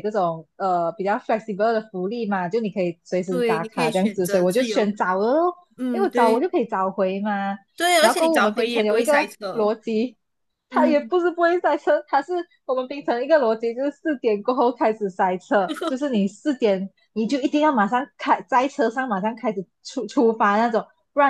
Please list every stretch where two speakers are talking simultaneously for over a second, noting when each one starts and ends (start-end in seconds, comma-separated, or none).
3.3-4.9, 8.0-9.7